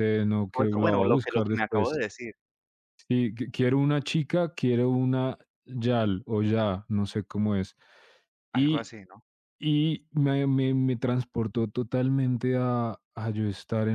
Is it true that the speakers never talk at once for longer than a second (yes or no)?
no